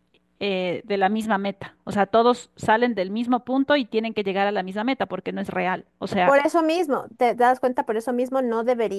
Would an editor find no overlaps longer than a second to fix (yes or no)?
yes